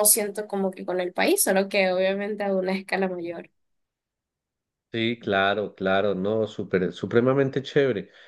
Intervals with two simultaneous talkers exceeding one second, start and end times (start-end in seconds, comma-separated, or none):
none